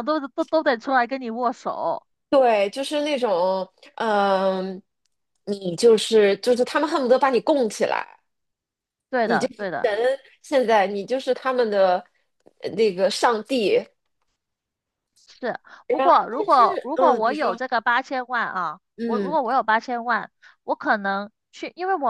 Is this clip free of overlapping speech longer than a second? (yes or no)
no